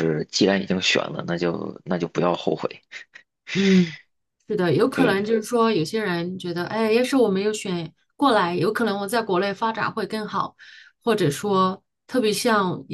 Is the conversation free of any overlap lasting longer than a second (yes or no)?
yes